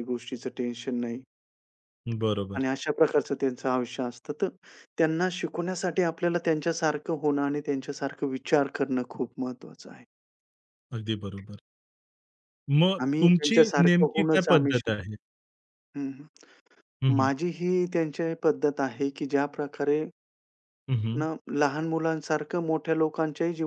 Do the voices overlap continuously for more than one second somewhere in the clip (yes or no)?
yes